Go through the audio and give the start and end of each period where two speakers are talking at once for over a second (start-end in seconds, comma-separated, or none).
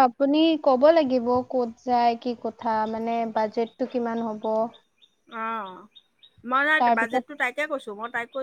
none